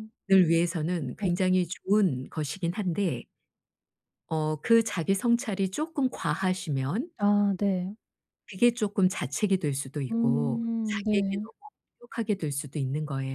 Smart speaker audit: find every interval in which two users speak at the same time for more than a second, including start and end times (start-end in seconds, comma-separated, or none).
10.1-11.4